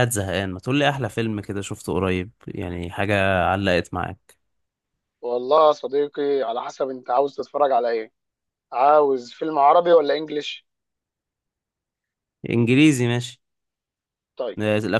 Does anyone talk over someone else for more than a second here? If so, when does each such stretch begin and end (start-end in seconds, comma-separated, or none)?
none